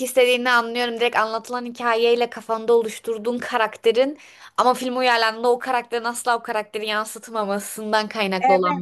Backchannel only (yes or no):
no